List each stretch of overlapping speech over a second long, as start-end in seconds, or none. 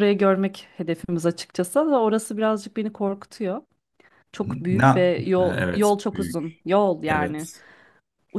4.7-6.4